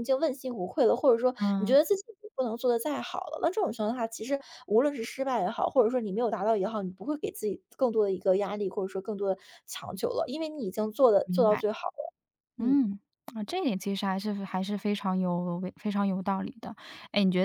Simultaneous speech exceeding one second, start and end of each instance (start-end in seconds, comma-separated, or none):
none